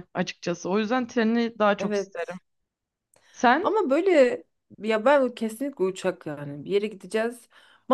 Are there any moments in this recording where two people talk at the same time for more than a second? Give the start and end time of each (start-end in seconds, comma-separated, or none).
none